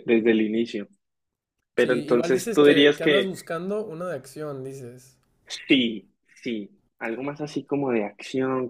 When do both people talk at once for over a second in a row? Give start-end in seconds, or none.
1.8-3.3